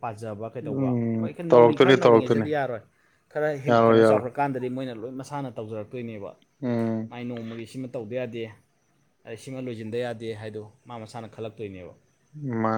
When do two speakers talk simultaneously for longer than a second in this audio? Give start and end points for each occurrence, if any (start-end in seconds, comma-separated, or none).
0.8-2.5